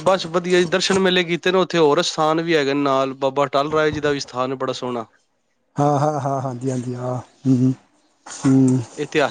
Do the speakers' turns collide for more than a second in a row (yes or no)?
no